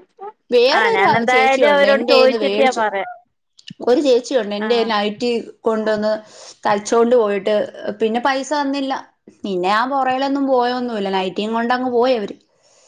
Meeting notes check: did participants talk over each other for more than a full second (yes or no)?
yes